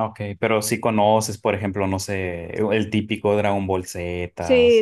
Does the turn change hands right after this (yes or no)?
yes